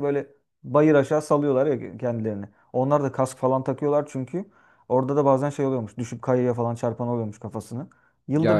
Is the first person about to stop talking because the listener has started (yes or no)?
no